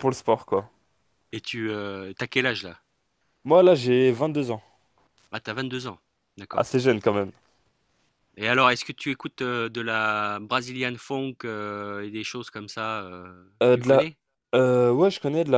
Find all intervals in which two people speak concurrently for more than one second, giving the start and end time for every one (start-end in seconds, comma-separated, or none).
none